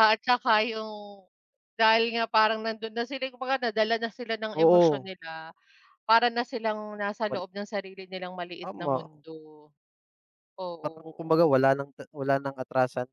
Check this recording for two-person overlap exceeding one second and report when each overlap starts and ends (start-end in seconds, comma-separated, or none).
none